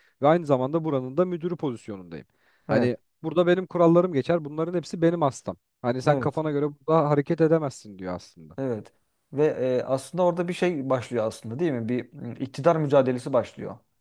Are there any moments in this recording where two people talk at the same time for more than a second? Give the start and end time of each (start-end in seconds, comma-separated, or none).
none